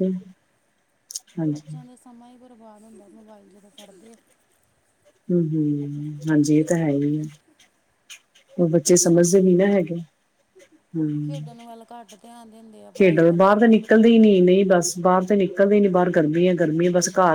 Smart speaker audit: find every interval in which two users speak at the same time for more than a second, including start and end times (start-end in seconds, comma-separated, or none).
13.0-14.7